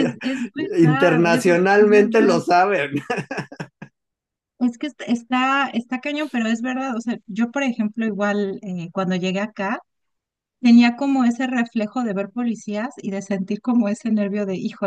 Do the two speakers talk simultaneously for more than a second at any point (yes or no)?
yes